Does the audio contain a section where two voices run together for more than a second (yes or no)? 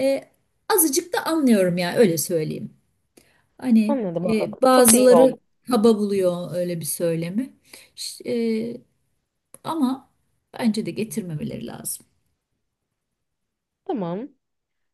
yes